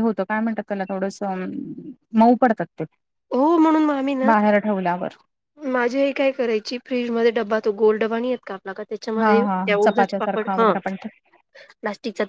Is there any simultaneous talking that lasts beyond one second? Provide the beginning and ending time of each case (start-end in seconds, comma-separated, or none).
9.2-10.7